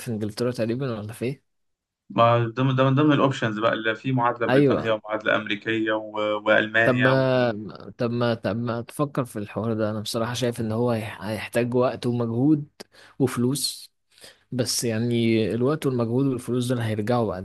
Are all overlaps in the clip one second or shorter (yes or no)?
yes